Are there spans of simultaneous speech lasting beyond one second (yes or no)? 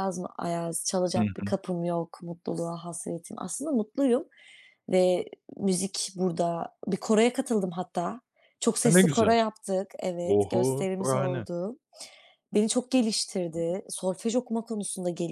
yes